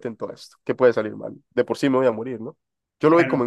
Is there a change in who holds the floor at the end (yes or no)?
no